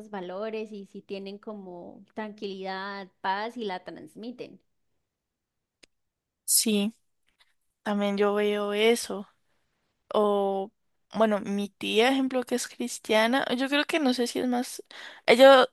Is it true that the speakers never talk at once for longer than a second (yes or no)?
yes